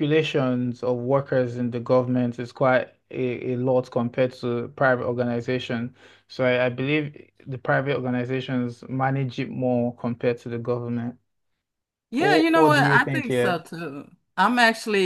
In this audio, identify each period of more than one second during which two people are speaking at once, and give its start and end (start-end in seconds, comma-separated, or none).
12.2-13.6